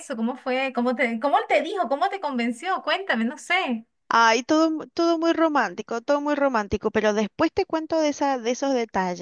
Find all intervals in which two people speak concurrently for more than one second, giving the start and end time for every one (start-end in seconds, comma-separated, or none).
none